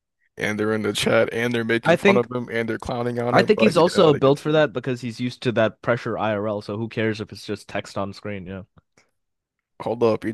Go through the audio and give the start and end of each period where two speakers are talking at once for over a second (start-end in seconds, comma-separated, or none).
3.3-4.7